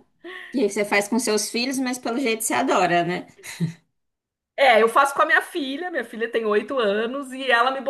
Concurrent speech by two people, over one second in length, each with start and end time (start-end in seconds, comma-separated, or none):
none